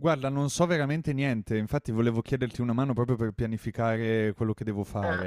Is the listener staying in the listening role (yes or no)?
no